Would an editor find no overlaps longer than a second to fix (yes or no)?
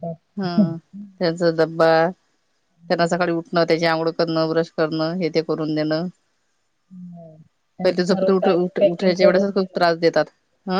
no